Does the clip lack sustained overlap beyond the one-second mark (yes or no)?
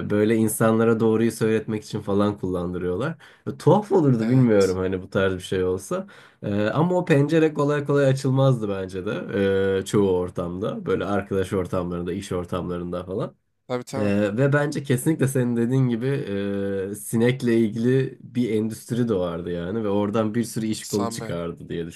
yes